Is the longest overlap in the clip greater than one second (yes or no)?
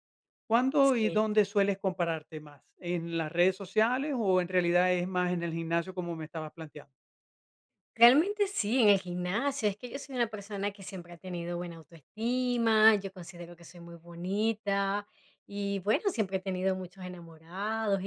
no